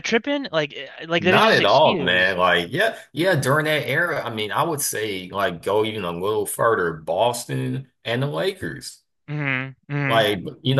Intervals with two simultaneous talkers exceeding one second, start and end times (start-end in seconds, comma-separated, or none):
1.2-2.4